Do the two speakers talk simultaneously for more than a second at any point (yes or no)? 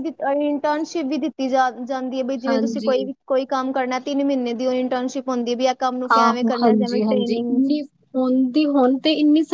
yes